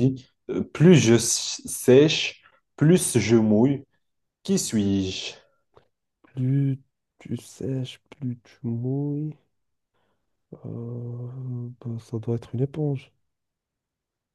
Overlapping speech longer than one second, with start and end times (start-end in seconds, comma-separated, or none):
none